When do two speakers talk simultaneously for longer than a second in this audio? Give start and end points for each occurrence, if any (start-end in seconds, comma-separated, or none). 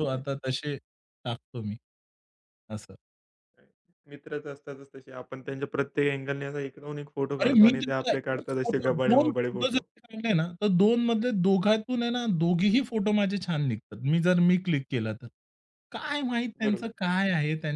7.4-9.8